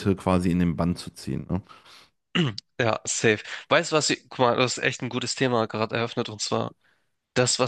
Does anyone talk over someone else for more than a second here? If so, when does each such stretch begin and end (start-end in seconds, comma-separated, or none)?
none